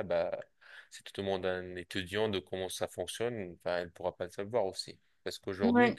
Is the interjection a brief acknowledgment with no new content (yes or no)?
yes